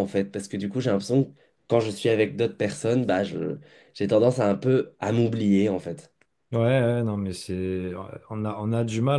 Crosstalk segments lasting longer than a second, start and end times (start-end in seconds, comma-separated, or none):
none